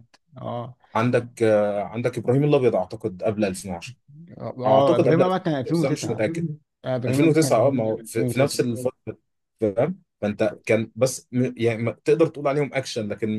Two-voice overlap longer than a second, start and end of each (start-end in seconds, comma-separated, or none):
4.7-6.3, 7.1-8.6